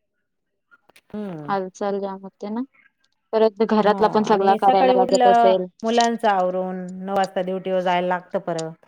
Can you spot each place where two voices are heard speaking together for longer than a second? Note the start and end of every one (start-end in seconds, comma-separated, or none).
none